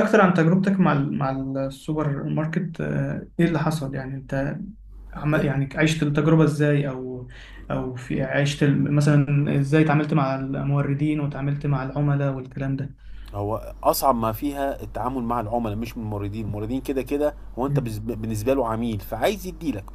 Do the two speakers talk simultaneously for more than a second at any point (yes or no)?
no